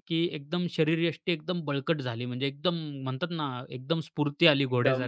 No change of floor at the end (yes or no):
no